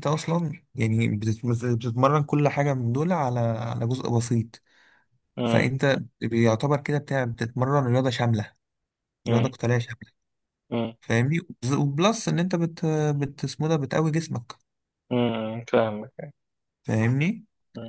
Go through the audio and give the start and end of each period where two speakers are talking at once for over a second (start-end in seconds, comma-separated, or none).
none